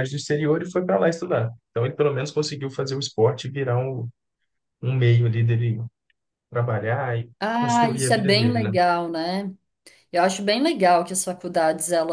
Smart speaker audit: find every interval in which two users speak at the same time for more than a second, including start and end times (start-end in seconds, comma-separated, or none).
7.4-8.7